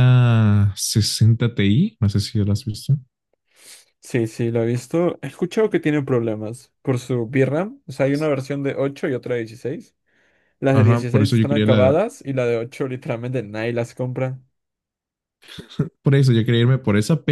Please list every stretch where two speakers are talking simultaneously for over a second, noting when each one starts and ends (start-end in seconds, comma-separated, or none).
10.7-12.0